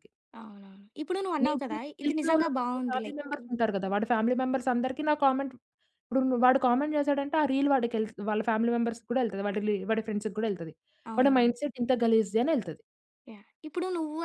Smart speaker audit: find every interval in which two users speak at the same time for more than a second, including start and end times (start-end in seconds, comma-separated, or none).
1.4-3.4